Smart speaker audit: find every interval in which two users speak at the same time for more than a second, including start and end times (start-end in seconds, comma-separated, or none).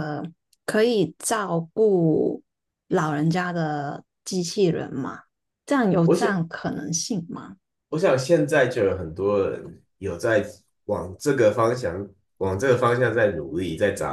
none